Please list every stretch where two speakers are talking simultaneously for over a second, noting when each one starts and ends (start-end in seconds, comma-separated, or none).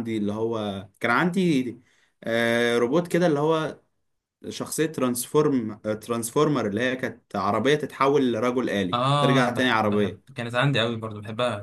8.9-10.2